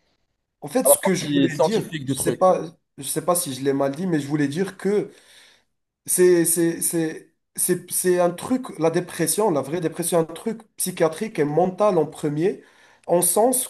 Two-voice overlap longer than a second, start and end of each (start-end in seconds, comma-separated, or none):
0.8-2.5